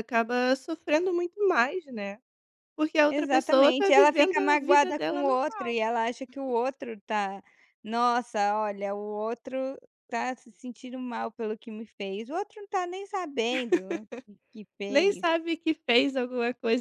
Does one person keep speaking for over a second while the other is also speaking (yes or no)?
yes